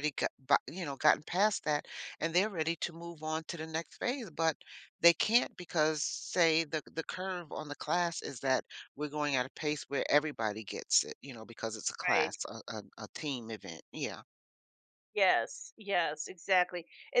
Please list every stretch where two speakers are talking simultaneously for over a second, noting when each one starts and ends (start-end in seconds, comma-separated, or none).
none